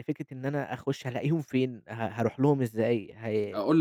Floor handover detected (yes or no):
yes